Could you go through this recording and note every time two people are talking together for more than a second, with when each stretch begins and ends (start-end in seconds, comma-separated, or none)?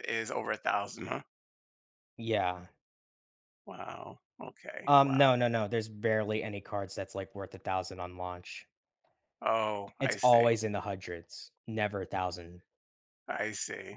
none